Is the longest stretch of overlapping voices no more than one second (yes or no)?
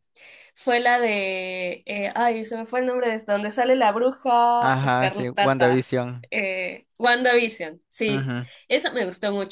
no